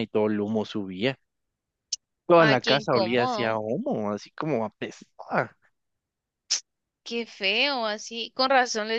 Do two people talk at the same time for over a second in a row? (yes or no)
yes